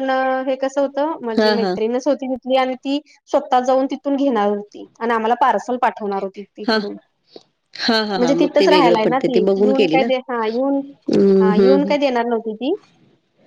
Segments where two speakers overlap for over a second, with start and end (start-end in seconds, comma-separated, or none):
8.2-10.1